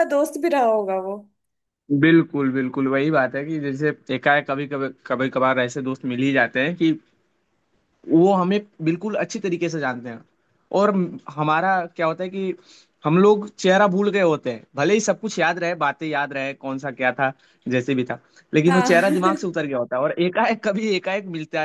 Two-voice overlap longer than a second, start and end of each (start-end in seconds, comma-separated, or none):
none